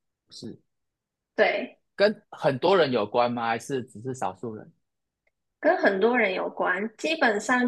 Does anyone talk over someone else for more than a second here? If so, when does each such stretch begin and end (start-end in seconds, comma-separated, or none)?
none